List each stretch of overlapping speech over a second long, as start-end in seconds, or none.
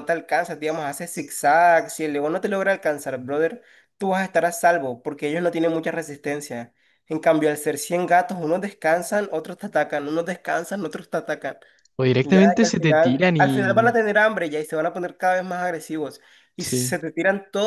12.2-13.9